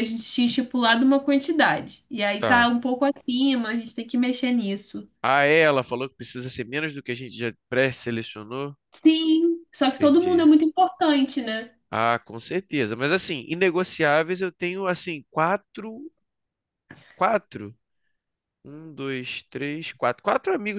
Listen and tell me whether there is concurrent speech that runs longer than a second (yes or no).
no